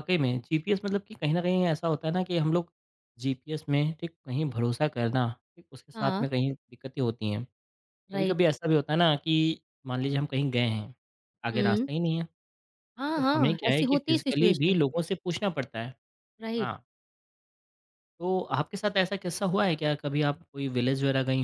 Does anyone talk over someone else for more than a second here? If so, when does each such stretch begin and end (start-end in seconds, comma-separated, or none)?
13.2-14.8